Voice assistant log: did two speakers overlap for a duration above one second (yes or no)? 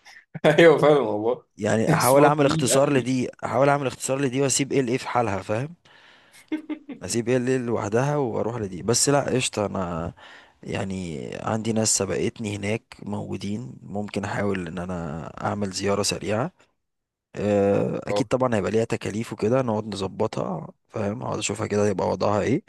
yes